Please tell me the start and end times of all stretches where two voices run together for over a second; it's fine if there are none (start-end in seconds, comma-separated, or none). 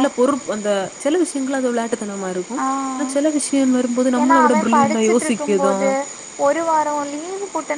4.2-5.7